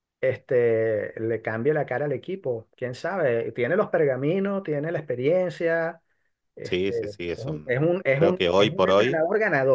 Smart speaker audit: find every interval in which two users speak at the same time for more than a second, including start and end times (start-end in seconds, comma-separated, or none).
6.6-9.2